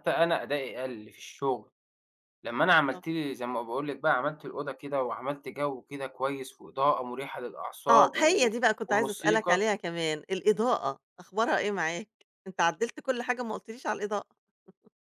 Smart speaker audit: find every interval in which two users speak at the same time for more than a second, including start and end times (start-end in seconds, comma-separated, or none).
7.9-9.6